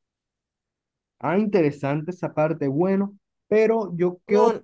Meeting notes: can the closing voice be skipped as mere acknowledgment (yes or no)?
yes